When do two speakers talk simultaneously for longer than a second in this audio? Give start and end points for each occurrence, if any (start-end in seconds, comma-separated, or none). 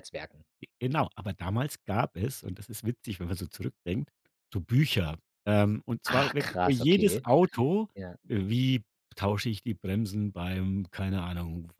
6.0-7.3